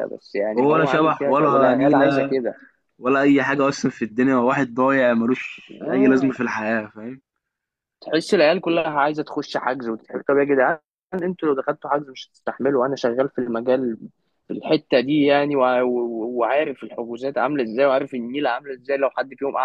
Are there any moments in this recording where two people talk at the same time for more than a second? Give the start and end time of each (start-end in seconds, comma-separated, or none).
0.6-2.2